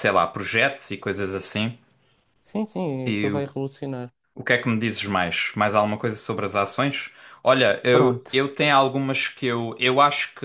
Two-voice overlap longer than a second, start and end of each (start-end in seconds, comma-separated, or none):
none